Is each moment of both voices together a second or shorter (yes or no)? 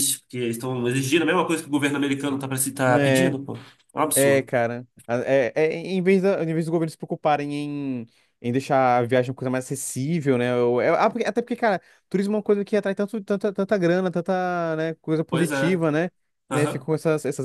yes